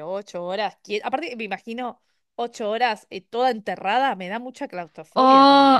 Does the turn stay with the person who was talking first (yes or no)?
no